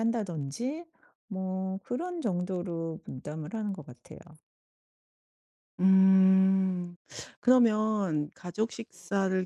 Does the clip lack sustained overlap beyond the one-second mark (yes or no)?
yes